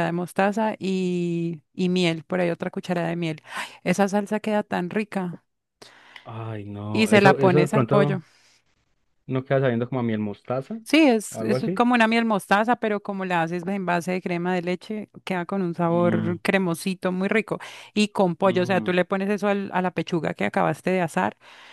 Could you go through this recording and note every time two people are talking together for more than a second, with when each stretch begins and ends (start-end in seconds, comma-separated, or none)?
6.9-8.2